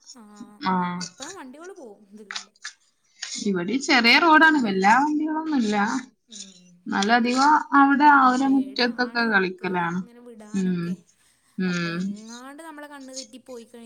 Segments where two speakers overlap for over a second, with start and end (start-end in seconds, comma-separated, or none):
8.2-10.0